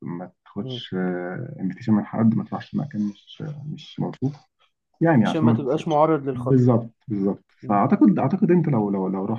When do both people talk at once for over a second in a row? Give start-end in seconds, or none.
5.2-6.8